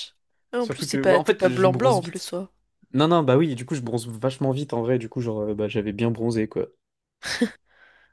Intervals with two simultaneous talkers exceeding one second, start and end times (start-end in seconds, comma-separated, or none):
0.6-2.3